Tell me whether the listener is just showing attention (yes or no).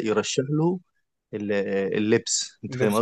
no